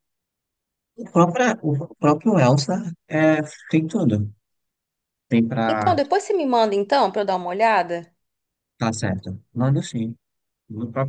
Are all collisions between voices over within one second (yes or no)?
yes